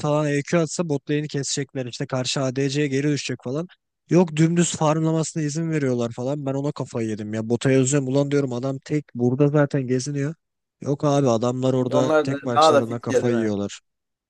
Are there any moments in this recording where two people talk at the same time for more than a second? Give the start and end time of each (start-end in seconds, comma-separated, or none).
11.7-13.6